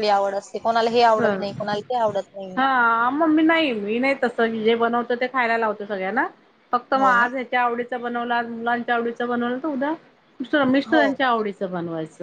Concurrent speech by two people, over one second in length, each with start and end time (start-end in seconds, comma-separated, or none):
none